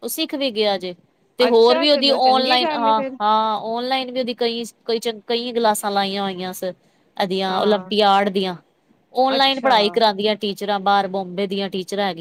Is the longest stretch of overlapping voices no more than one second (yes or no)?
no